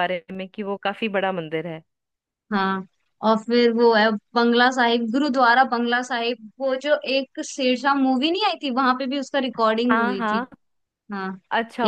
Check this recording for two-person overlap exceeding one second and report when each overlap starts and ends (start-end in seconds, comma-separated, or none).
none